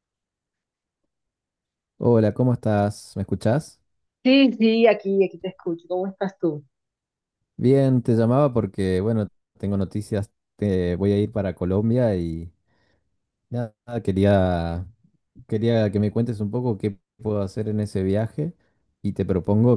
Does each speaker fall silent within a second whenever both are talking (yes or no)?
yes